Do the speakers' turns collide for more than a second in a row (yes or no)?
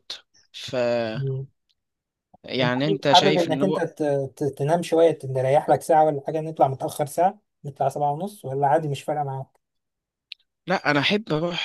yes